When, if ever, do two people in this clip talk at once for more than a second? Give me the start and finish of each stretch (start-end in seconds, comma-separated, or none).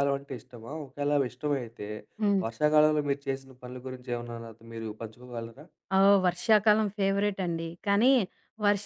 none